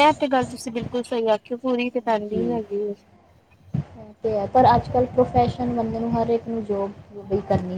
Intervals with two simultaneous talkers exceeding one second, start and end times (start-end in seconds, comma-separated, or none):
none